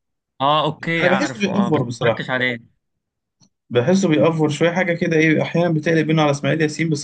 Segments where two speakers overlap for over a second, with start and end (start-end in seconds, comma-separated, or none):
1.0-2.2